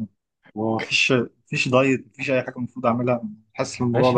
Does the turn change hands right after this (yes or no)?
yes